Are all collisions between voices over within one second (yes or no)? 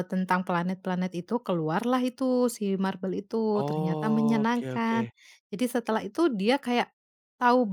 no